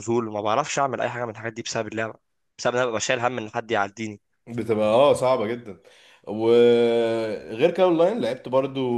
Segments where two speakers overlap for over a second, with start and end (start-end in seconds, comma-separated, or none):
none